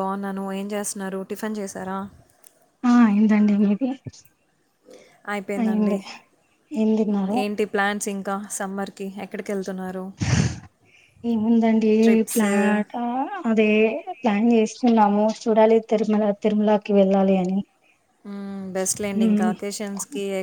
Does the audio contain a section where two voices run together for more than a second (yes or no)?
no